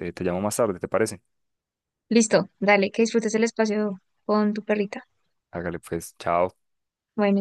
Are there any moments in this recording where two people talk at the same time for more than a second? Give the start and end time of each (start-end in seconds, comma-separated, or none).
none